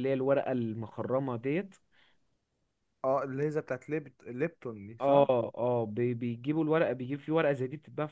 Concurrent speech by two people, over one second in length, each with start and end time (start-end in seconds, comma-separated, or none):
none